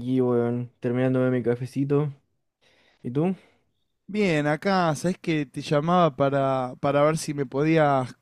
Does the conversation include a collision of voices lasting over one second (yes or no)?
no